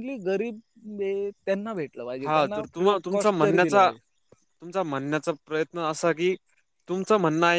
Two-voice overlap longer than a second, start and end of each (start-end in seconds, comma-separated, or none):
2.2-3.9